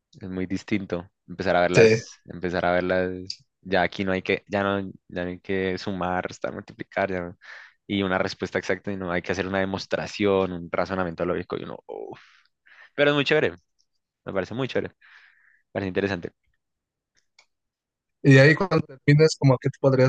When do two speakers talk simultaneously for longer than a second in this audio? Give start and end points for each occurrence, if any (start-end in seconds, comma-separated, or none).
none